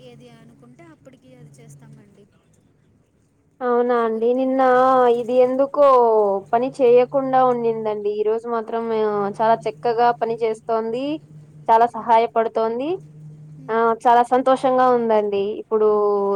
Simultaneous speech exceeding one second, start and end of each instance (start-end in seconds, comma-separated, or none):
none